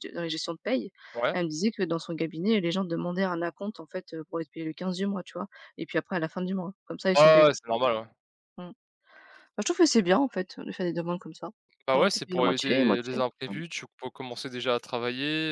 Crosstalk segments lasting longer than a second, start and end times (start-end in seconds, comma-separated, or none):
11.9-13.6